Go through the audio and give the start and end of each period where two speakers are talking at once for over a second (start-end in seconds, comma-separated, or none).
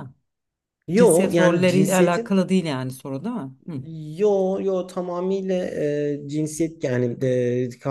0.9-2.4